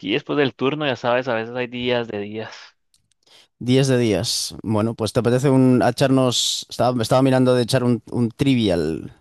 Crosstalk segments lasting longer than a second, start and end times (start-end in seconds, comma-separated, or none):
none